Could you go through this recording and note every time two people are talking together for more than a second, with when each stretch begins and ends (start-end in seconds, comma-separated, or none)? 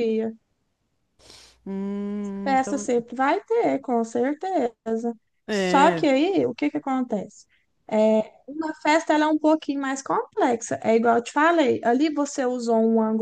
none